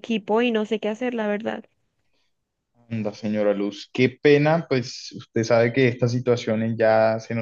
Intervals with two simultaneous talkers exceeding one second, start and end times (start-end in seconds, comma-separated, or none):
none